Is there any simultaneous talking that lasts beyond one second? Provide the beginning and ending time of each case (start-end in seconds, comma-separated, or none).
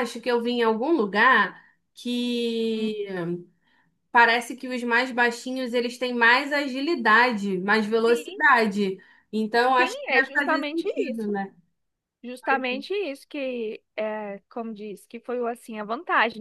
9.8-11.3